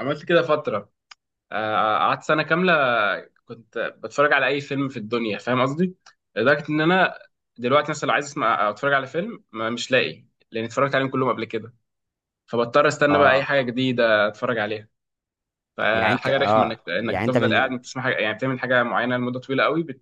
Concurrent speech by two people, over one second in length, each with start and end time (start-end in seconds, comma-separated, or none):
15.9-17.7